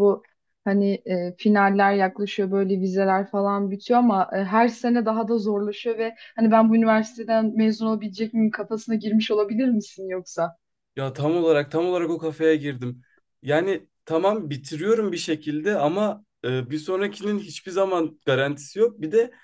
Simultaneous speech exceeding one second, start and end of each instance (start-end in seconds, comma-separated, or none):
none